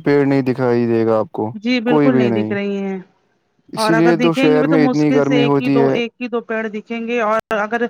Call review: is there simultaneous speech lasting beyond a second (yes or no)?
yes